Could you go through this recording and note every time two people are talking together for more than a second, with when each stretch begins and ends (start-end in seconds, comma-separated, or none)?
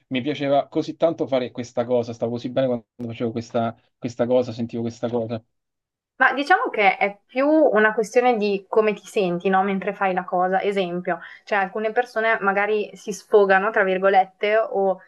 none